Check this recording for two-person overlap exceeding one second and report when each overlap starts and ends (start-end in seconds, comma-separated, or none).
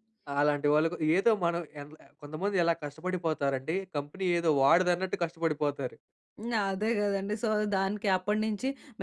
none